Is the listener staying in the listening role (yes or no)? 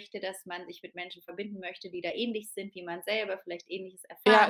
no